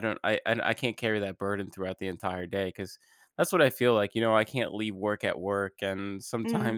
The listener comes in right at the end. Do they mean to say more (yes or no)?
no